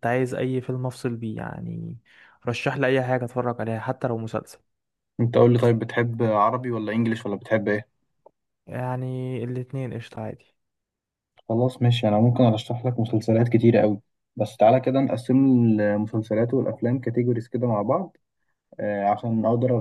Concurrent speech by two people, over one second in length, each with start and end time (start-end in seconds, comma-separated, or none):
none